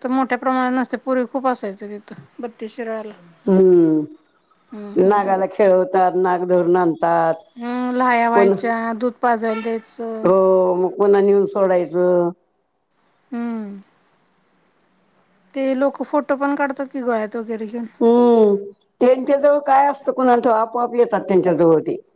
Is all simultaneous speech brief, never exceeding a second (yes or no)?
yes